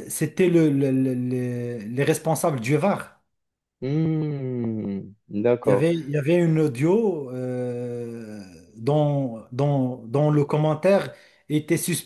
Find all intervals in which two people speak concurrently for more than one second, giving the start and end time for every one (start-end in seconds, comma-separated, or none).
none